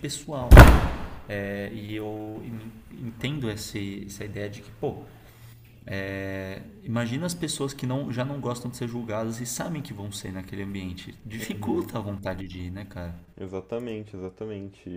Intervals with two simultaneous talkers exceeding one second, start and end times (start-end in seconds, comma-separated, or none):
none